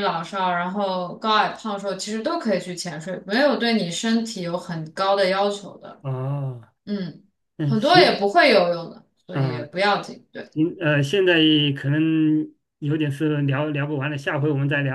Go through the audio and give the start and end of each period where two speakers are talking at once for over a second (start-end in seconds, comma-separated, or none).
none